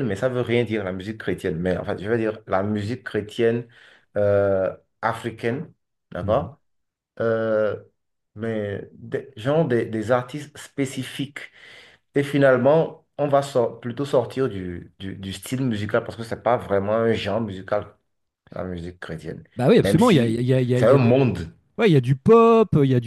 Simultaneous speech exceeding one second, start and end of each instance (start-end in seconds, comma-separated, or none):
19.8-21.2